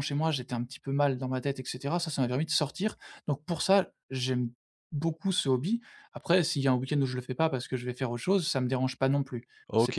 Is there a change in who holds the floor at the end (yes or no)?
yes